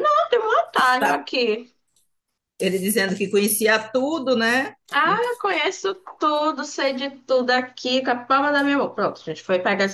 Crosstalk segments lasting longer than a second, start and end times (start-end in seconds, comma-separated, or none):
none